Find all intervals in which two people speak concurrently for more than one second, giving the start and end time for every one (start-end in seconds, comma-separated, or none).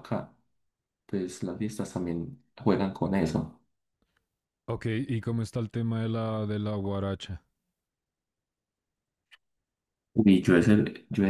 none